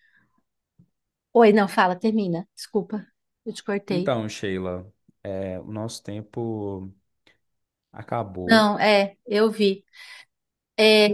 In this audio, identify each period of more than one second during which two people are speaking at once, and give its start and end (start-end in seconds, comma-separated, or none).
none